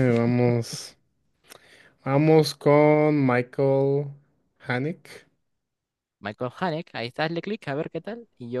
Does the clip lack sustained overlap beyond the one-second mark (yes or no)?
yes